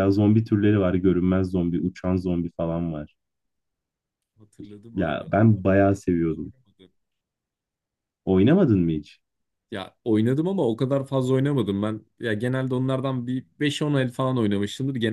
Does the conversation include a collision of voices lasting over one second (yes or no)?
no